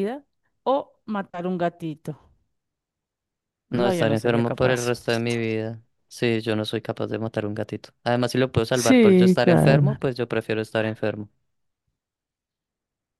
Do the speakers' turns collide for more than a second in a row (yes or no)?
yes